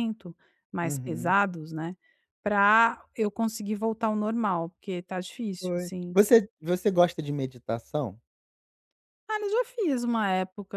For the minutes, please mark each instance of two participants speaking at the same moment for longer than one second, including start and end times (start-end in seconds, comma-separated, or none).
none